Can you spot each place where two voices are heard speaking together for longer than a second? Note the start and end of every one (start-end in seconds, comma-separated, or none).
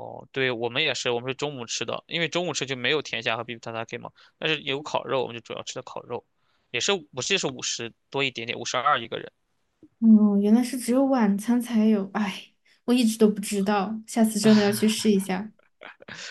none